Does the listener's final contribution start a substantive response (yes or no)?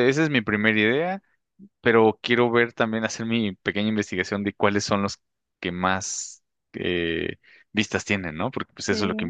yes